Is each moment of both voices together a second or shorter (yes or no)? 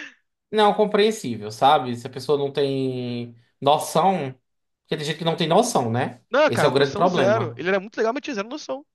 no